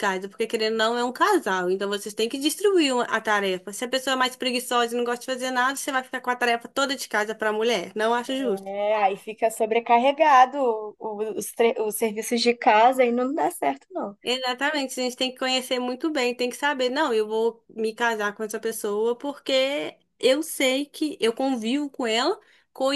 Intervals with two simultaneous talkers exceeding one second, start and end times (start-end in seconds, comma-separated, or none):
none